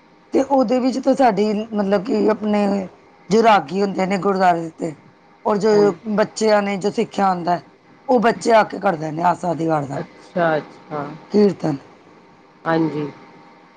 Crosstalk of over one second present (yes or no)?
no